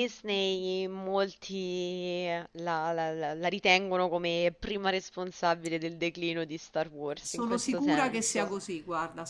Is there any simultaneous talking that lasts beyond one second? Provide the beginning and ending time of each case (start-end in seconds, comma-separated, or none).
7.2-8.5